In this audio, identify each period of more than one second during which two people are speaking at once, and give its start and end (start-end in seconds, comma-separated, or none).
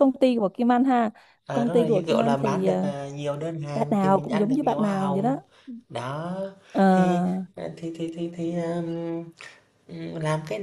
1.5-2.9, 3.7-5.4